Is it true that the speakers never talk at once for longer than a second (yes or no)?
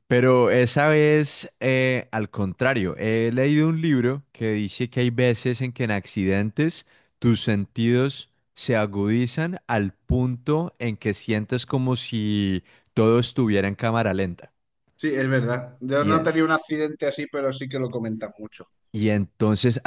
yes